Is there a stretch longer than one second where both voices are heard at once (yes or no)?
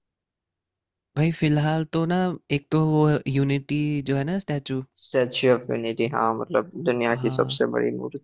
no